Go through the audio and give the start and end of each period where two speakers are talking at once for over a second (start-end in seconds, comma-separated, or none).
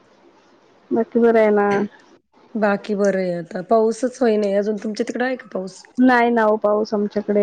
none